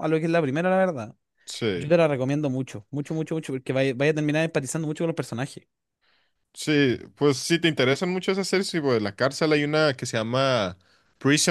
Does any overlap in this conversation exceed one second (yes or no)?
no